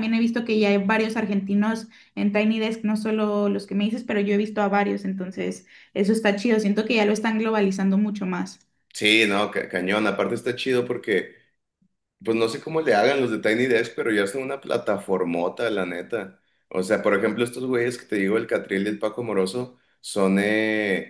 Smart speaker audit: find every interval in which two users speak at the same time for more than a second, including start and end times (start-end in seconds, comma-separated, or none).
none